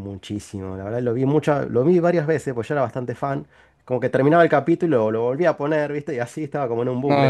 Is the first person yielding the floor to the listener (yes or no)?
yes